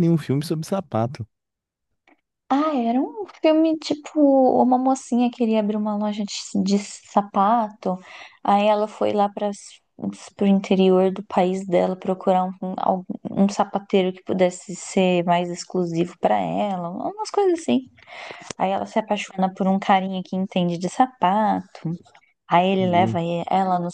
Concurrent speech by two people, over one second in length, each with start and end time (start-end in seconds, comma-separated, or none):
none